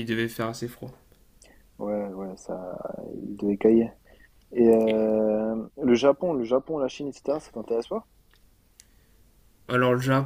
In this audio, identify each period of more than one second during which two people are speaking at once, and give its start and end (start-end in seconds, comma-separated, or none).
none